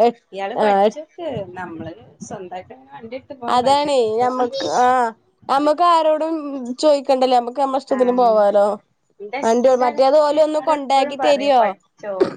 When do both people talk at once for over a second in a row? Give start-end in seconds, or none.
9.5-11.1